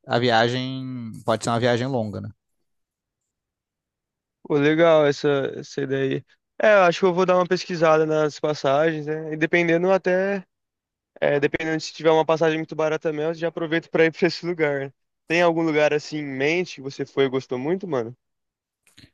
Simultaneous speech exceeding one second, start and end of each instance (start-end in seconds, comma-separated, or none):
none